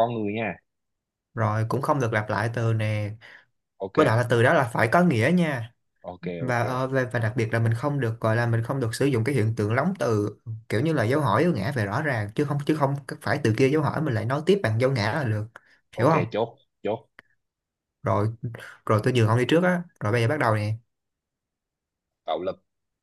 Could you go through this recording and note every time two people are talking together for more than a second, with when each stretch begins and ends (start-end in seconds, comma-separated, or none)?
none